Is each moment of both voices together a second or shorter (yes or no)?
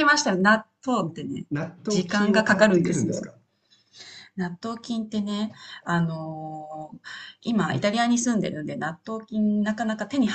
no